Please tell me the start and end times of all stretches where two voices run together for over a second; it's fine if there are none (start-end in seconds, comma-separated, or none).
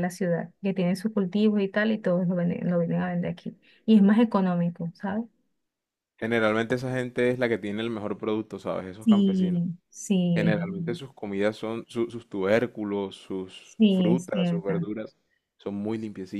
13.6-14.9